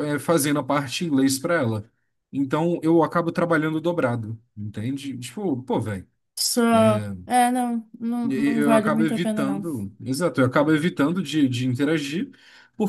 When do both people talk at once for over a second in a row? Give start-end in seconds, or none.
8.3-9.6